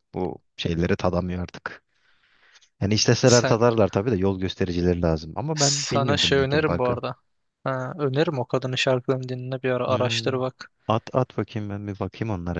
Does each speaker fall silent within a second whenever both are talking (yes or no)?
no